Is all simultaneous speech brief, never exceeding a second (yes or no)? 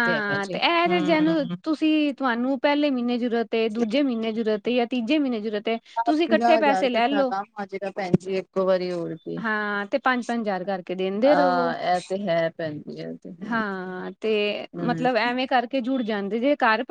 yes